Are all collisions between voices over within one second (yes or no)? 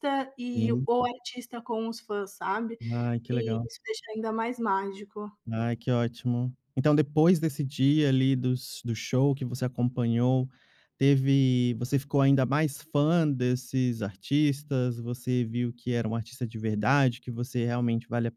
yes